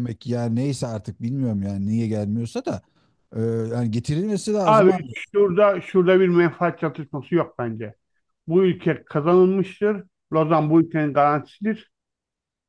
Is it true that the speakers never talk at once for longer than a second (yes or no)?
yes